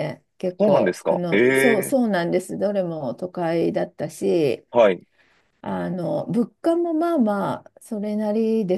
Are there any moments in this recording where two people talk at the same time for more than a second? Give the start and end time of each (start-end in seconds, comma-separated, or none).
0.6-1.9